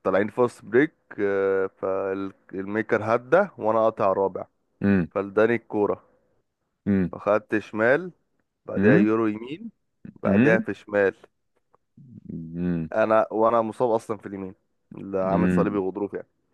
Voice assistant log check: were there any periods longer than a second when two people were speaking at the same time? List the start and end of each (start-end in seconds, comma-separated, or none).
none